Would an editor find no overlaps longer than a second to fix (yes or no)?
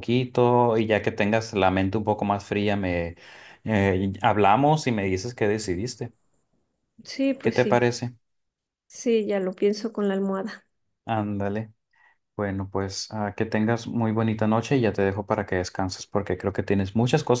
yes